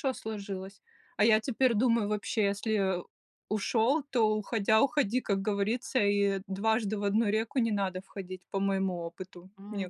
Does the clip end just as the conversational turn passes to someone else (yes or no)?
yes